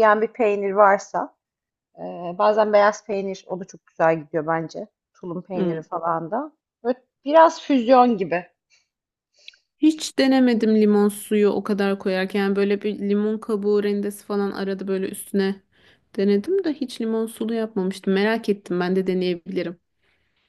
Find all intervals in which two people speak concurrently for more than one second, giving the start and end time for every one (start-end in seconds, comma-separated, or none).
none